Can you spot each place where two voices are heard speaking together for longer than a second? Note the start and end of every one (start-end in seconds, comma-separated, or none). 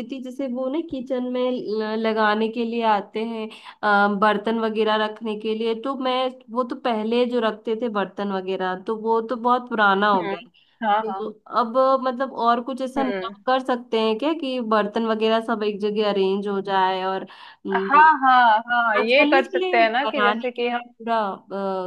19.0-20.8